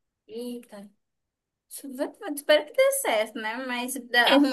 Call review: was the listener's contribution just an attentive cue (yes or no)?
yes